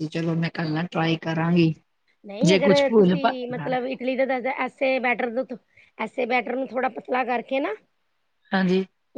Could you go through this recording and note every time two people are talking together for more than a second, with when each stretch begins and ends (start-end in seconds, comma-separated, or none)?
none